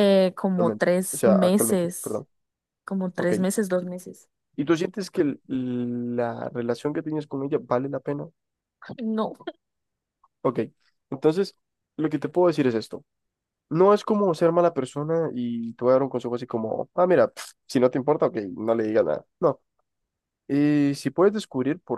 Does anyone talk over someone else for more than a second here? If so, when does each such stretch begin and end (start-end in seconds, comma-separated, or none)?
0.5-2.2